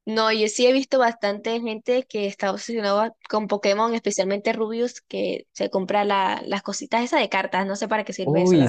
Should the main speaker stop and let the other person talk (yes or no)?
yes